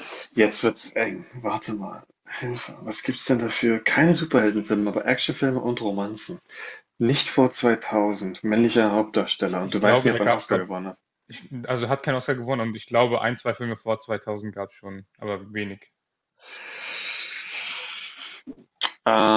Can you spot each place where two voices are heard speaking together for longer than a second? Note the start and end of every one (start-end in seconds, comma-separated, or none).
9.4-10.7